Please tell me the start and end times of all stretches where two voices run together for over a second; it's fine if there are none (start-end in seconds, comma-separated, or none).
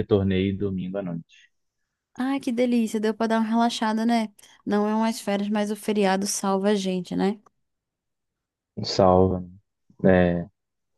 none